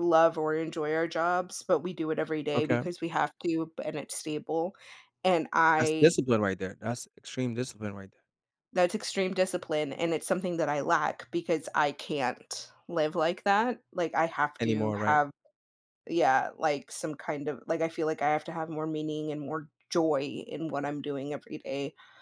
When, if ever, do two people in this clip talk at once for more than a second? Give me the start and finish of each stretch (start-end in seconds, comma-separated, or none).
none